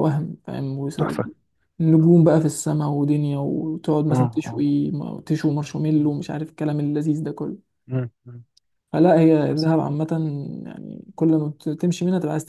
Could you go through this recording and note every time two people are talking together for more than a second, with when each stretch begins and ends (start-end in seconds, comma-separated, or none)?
none